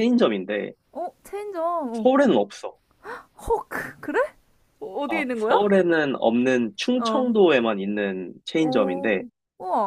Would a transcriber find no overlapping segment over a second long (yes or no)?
yes